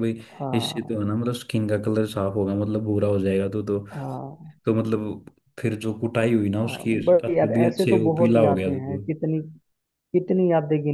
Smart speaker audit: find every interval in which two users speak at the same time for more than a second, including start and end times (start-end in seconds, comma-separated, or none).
6.7-9.0